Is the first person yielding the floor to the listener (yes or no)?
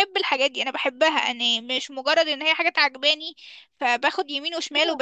yes